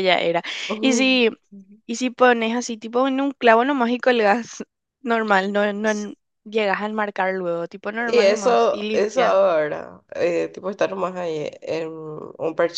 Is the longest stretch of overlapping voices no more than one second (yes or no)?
no